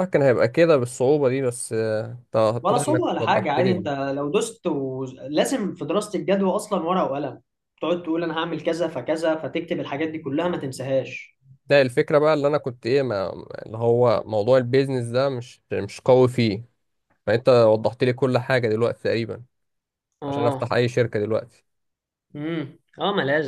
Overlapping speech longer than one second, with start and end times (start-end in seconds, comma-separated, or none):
2.6-3.9